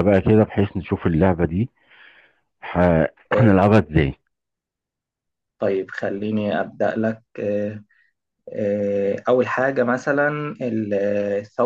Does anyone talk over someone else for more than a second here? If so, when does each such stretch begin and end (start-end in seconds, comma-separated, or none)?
none